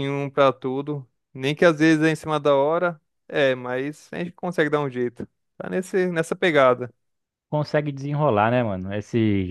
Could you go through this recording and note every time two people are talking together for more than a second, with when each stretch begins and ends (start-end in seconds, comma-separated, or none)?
none